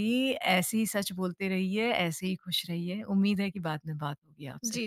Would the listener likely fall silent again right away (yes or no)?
no